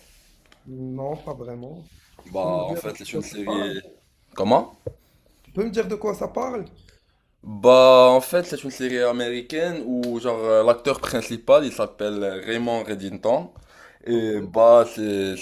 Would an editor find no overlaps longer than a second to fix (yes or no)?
no